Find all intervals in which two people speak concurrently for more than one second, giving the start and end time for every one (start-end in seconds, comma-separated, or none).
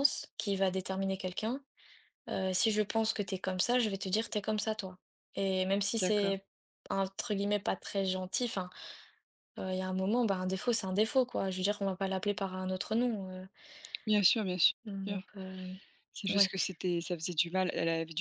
none